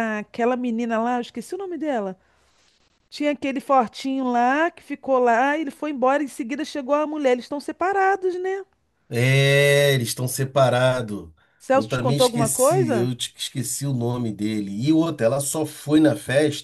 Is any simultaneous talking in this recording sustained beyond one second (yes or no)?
yes